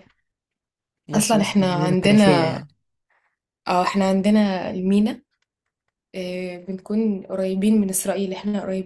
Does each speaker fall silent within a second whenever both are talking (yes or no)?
no